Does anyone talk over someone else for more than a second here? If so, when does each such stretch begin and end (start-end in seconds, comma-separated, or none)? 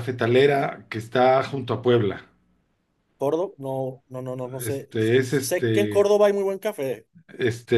4.6-6.1